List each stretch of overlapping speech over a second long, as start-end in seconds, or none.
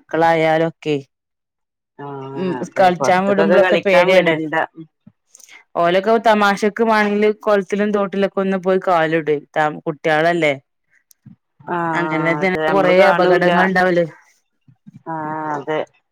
2.4-4.3, 12.0-13.5